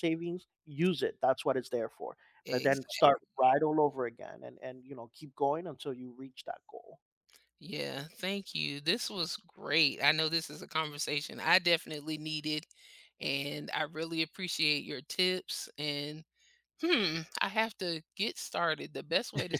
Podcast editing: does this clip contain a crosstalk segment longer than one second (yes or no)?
no